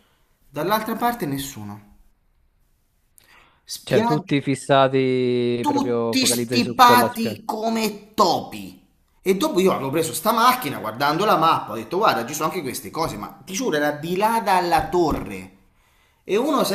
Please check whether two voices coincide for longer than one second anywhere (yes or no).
yes